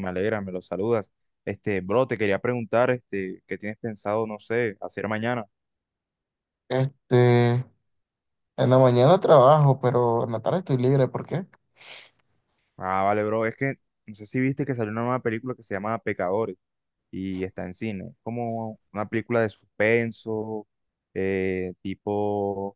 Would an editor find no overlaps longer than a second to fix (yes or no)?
yes